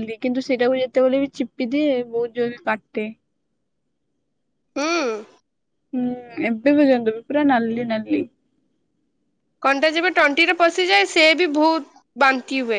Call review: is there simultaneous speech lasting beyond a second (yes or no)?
no